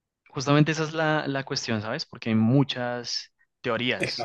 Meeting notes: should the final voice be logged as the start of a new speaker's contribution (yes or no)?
no